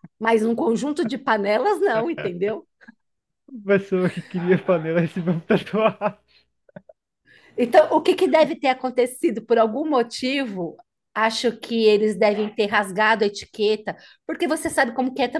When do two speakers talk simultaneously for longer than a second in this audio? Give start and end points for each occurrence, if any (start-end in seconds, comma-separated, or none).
none